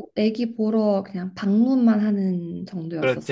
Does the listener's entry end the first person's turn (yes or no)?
yes